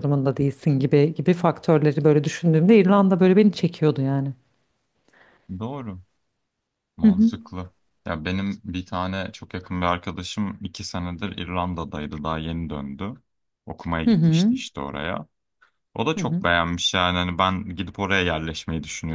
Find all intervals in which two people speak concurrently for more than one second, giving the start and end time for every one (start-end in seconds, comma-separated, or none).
none